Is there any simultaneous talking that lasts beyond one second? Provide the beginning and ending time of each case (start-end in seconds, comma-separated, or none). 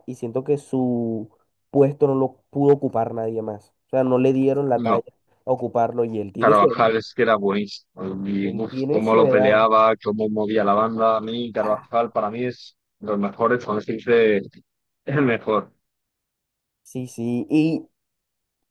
8.4-9.7